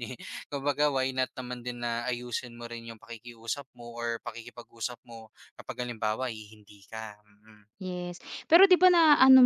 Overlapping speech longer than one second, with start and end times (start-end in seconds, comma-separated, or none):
none